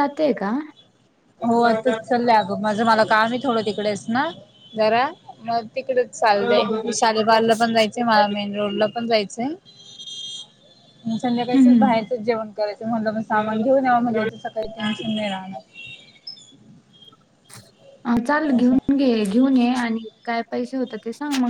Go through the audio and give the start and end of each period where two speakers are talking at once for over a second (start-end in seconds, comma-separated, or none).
none